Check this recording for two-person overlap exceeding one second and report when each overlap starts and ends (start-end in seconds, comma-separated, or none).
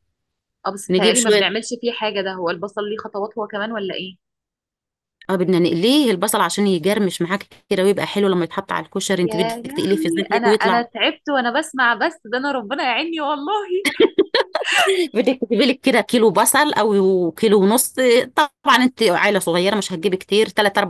9.2-10.8